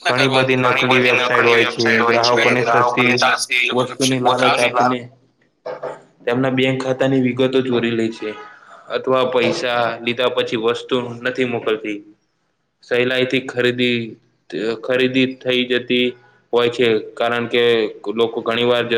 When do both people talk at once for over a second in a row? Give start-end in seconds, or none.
0.6-3.1